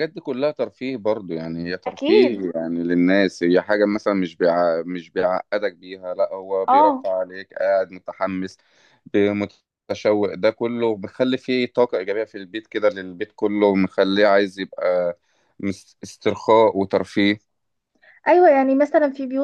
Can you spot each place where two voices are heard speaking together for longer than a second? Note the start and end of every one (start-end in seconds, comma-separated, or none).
none